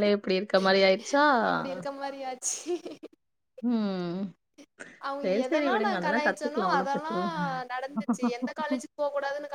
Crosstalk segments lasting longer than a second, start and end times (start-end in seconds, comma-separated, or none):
5.2-7.1